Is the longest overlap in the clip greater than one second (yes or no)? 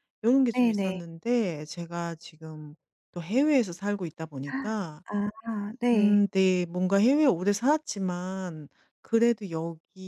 no